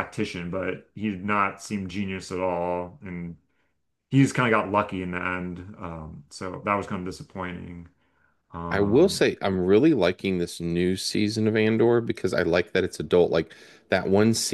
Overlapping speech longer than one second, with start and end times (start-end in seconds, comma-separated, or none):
none